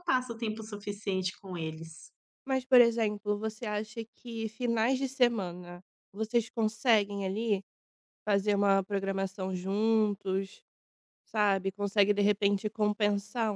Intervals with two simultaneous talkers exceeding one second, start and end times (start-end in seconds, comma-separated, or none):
none